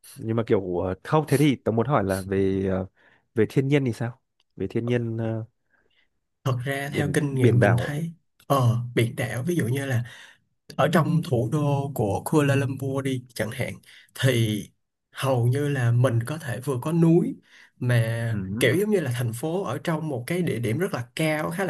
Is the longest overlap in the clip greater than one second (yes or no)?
yes